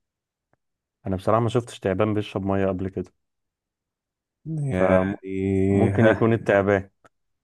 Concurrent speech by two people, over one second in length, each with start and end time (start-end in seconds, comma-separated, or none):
4.7-6.3